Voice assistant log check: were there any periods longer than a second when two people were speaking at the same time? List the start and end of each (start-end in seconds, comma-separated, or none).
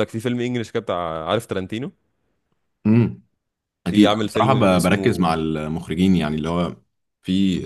3.9-5.3